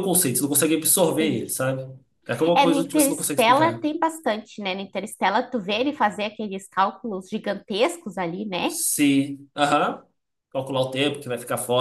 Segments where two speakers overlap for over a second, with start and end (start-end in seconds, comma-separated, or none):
2.5-3.8